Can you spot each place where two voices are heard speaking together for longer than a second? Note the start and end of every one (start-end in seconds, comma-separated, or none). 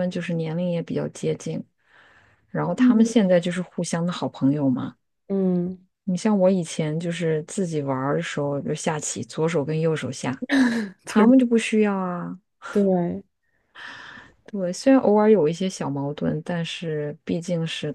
none